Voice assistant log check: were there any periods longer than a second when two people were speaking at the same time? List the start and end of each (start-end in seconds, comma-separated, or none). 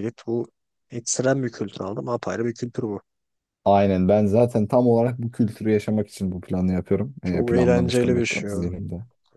7.2-8.7